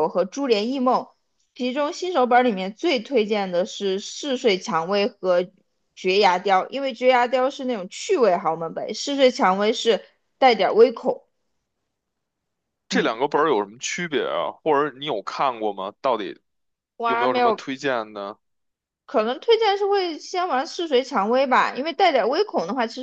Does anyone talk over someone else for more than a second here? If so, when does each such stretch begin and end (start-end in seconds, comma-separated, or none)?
none